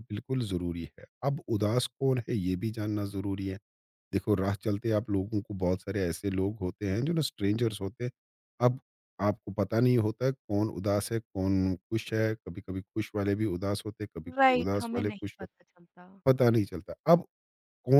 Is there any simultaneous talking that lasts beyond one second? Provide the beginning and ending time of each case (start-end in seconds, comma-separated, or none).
14.4-15.8